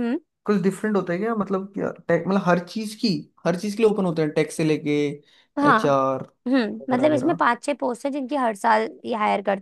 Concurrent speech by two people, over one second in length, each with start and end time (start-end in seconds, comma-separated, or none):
none